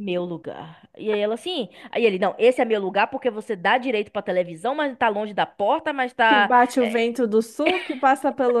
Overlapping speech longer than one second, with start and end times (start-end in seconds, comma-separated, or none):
none